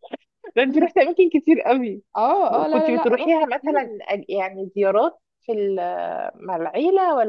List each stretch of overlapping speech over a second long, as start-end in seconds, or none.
2.7-3.9